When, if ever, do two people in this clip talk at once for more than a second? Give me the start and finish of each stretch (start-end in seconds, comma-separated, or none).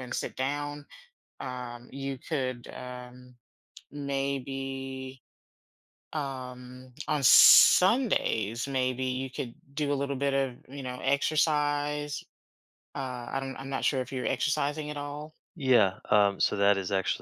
none